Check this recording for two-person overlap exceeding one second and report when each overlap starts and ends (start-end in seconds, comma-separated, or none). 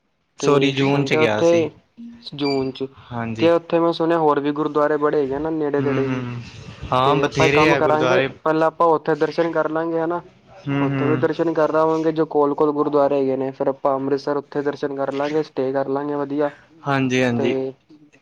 7.0-8.2